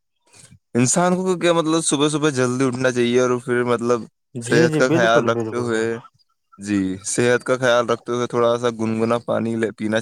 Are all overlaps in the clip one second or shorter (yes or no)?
no